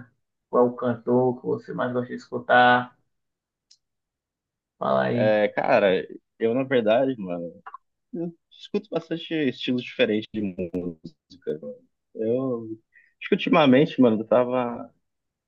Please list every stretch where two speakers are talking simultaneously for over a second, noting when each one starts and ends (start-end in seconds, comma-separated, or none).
none